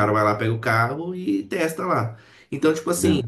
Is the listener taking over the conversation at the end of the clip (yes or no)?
no